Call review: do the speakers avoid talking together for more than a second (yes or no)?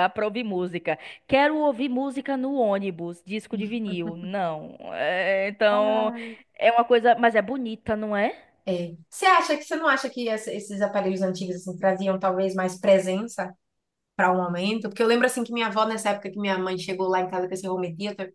yes